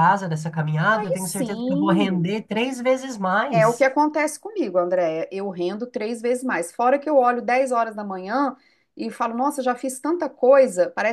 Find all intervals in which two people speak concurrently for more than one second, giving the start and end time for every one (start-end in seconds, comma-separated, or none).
0.9-2.3